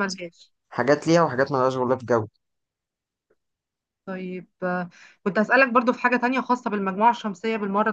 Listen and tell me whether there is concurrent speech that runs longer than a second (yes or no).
no